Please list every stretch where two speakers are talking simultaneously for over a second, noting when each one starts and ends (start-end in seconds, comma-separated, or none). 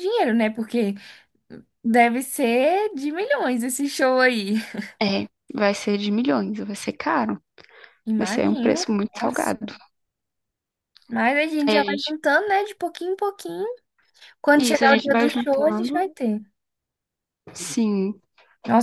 8.2-9.7, 14.6-16.1